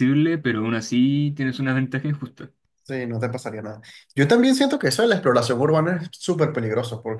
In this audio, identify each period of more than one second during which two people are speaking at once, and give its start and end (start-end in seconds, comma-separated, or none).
none